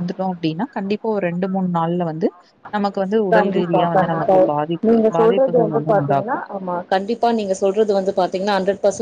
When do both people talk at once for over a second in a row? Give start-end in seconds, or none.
3.3-6.4